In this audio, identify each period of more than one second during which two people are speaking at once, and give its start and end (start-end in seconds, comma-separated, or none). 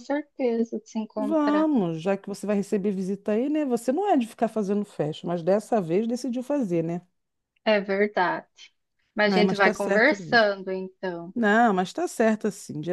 9.3-10.5